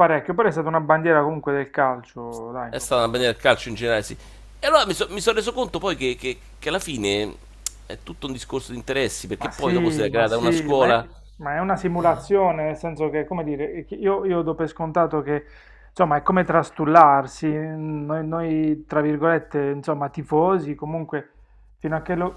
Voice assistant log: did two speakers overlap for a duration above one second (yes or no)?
yes